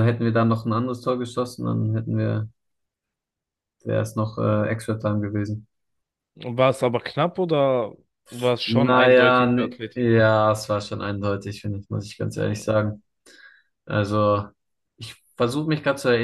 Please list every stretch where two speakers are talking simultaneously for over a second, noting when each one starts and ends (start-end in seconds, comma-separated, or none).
8.6-10.2